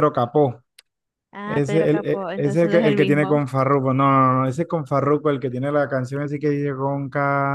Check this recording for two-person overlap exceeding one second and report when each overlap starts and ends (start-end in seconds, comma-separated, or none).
1.4-3.4